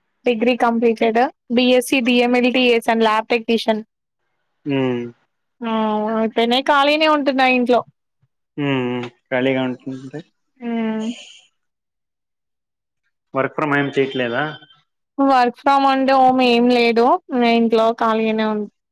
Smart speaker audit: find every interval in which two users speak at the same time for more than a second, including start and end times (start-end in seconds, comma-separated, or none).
none